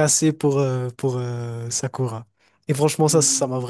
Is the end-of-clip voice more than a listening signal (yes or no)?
no